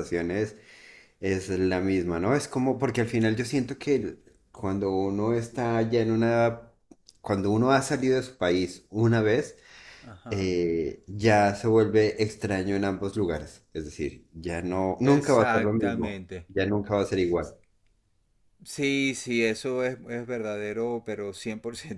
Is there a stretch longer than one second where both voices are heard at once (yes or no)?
yes